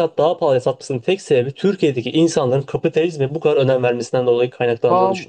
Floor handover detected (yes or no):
yes